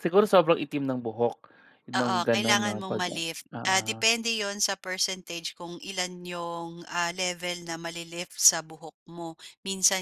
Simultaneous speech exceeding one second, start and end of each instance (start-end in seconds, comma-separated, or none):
2.0-3.2